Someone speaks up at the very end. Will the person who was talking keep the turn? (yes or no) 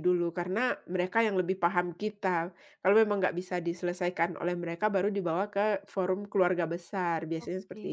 no